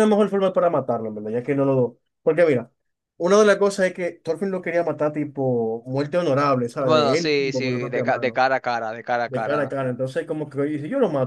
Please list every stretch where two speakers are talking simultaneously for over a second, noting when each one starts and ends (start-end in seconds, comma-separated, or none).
6.8-8.4